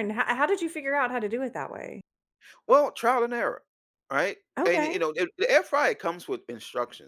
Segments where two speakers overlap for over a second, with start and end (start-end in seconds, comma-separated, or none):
none